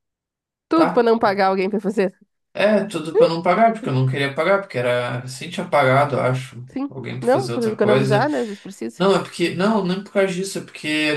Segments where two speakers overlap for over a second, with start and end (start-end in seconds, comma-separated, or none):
6.7-8.3